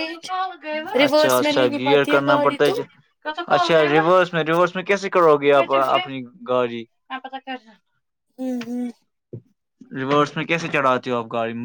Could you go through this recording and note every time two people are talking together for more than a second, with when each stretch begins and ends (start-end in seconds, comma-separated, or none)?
1.1-2.7